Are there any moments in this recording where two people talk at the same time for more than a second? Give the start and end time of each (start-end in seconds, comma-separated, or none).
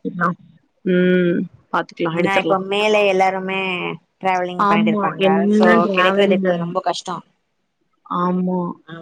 4.7-6.6